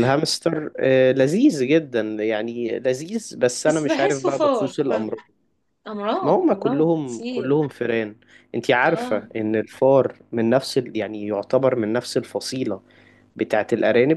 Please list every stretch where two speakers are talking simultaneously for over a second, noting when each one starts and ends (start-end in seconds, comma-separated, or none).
3.7-5.2, 6.2-7.6